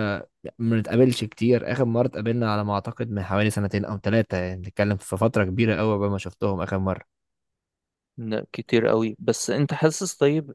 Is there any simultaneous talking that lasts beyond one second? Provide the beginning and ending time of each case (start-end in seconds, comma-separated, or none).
none